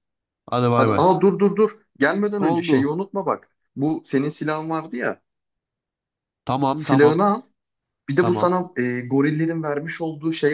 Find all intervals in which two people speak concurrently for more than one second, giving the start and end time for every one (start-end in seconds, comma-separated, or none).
none